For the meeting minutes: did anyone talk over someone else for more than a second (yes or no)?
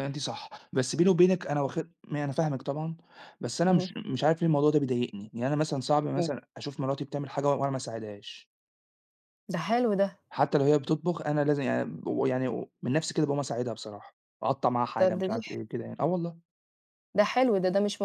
no